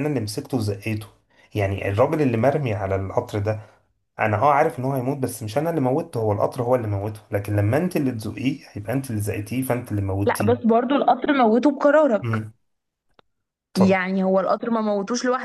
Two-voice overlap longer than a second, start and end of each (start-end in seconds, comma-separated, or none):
none